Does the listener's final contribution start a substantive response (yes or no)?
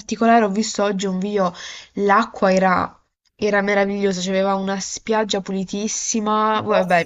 no